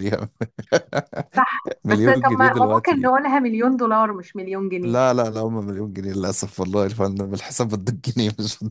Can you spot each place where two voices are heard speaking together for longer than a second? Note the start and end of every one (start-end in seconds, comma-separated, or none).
1.9-3.1